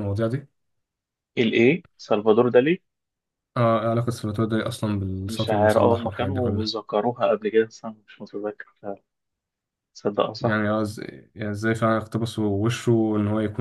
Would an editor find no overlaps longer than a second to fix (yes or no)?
no